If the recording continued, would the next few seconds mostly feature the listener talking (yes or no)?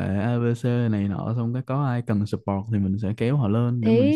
yes